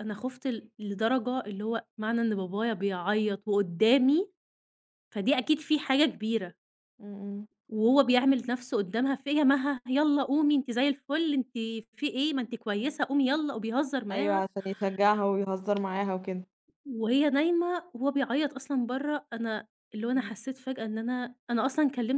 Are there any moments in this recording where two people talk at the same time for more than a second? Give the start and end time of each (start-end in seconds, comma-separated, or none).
none